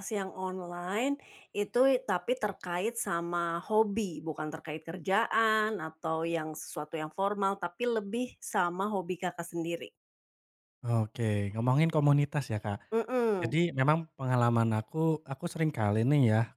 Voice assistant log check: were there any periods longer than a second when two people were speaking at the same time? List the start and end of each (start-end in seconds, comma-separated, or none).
none